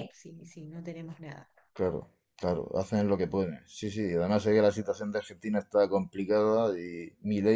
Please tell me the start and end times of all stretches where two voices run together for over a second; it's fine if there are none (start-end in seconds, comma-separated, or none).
none